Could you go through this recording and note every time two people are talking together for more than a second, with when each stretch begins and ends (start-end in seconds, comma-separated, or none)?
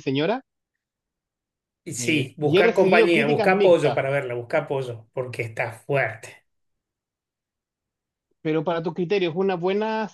2.0-4.0